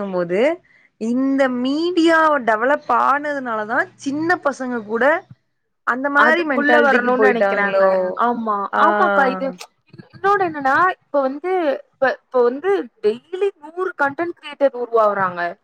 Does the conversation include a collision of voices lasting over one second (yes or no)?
yes